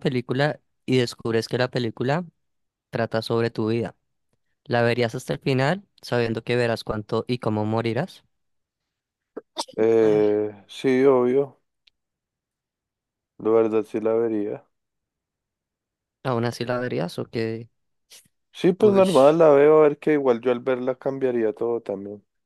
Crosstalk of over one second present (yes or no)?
no